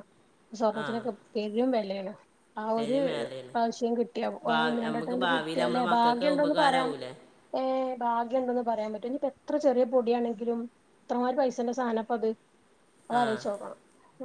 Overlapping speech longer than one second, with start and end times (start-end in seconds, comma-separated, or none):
4.5-6.9